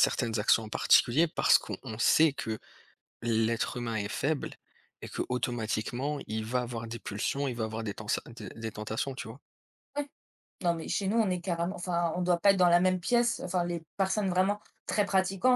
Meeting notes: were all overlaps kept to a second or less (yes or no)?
yes